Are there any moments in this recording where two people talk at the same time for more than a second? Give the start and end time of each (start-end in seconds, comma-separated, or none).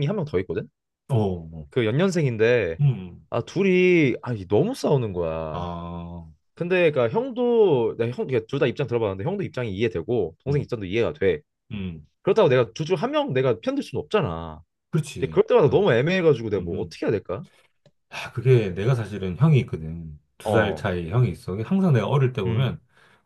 none